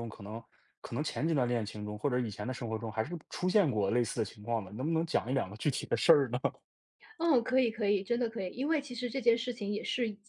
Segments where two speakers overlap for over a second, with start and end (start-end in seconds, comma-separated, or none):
none